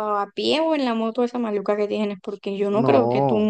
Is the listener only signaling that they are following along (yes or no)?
yes